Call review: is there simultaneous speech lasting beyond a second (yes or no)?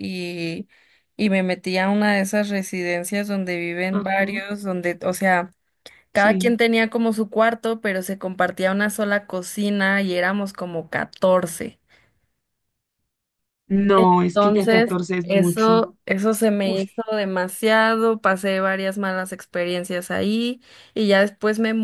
yes